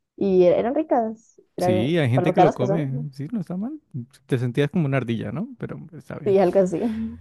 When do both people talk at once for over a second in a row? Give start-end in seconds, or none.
1.6-3.1